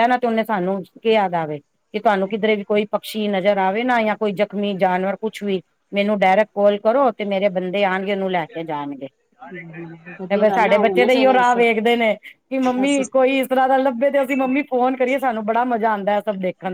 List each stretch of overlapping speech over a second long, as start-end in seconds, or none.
10.3-11.6